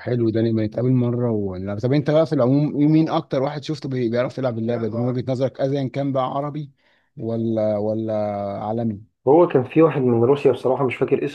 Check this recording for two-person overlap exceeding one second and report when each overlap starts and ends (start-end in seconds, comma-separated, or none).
none